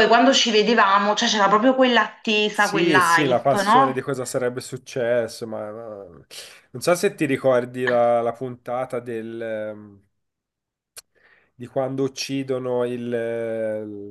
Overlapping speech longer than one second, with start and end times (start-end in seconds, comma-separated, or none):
2.6-4.1